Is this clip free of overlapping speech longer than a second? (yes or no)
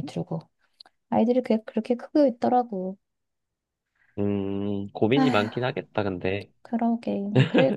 yes